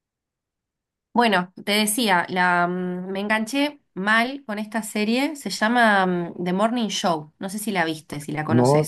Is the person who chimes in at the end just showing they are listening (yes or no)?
no